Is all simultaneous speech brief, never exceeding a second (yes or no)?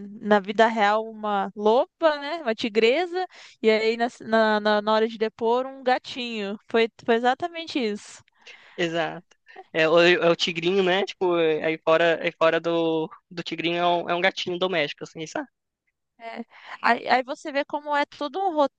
yes